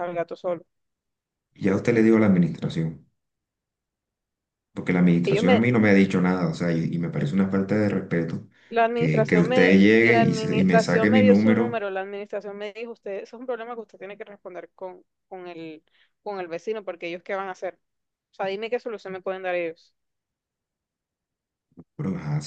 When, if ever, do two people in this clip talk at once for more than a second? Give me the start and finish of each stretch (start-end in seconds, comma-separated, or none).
8.9-11.8